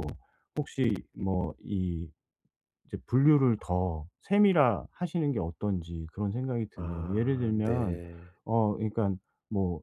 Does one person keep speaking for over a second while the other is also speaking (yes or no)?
yes